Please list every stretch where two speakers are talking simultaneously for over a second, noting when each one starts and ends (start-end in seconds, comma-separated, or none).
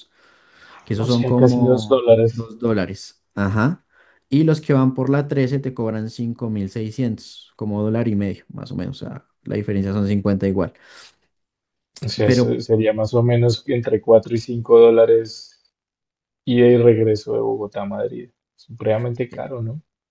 0.9-2.4